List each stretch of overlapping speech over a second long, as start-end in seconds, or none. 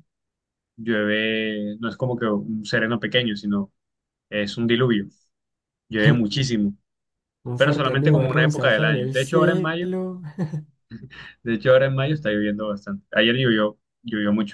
7.6-9.9